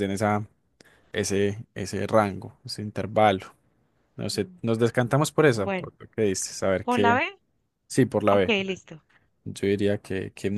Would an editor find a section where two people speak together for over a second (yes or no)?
no